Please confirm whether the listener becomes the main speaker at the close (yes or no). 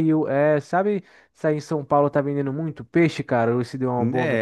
yes